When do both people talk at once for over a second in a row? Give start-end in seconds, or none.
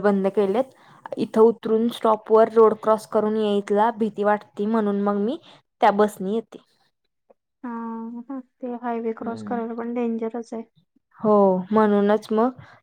none